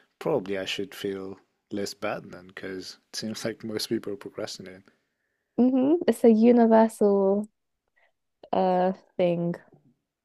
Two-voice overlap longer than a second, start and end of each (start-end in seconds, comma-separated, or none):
none